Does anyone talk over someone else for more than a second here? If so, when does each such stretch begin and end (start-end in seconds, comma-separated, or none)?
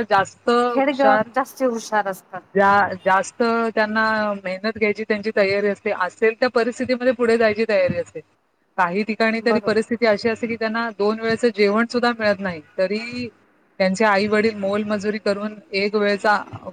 none